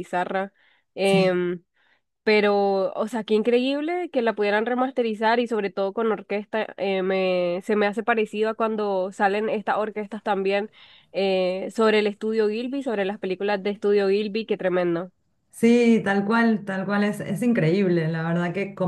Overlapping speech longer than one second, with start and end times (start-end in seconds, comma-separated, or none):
none